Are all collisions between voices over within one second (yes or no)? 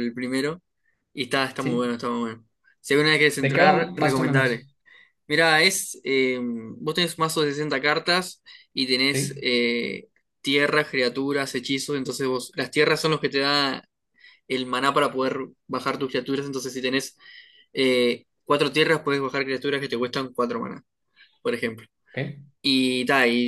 no